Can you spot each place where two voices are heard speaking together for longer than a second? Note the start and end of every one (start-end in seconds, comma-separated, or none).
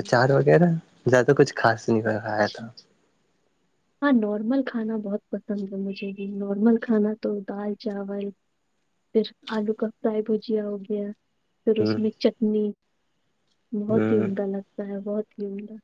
none